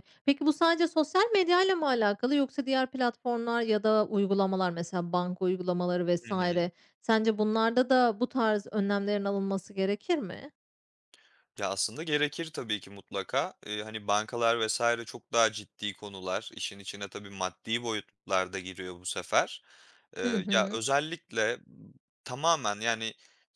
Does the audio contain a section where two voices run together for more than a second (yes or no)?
no